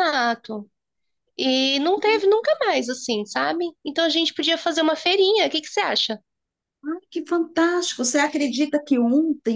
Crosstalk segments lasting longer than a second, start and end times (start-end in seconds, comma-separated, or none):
none